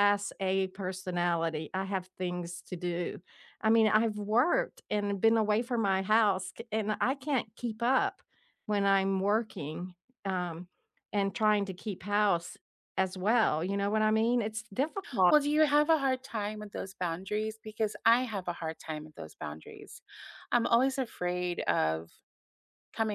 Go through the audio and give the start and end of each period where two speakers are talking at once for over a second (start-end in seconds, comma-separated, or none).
none